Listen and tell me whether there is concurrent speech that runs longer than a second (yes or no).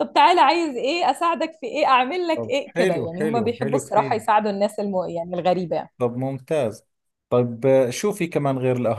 yes